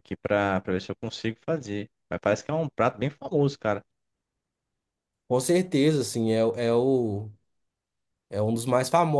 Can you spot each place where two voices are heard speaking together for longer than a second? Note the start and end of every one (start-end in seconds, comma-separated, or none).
none